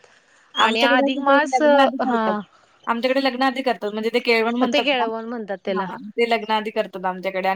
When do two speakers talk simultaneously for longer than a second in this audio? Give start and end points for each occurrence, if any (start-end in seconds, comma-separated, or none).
0.6-2.3